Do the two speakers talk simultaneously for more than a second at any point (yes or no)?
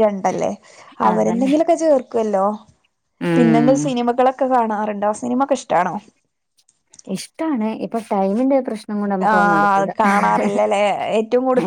no